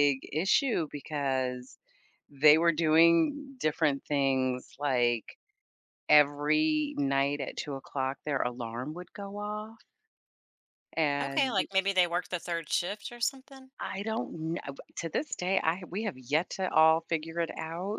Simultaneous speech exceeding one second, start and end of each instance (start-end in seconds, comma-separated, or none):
none